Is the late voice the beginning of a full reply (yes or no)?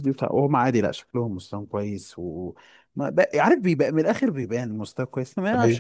no